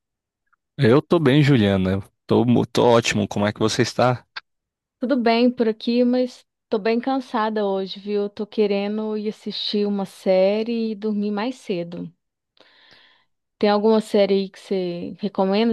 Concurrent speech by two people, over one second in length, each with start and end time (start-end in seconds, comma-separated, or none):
none